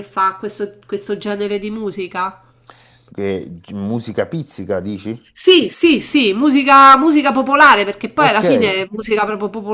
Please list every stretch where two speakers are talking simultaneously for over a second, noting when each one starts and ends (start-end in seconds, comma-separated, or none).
none